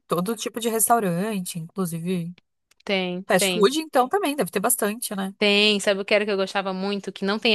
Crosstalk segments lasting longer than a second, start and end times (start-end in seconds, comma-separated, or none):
none